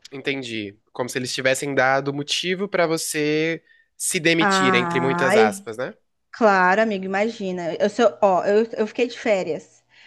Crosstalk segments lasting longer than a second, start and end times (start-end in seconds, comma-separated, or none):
4.4-5.6